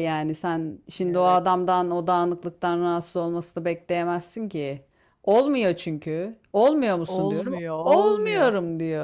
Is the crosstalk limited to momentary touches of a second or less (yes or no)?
no